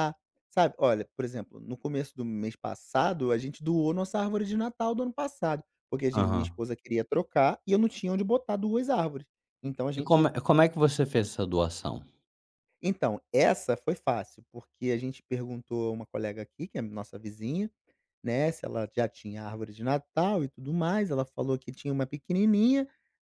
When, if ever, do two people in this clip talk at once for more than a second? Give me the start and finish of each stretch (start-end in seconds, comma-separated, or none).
none